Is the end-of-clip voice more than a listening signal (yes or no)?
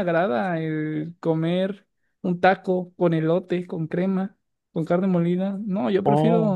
yes